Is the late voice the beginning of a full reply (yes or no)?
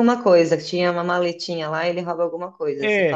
yes